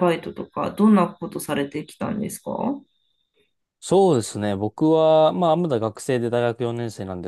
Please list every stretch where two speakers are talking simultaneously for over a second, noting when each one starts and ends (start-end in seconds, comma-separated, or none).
none